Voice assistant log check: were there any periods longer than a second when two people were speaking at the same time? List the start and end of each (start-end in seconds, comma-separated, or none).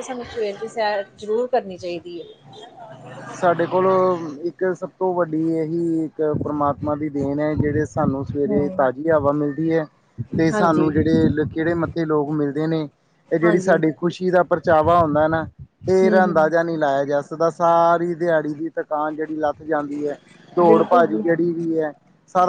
none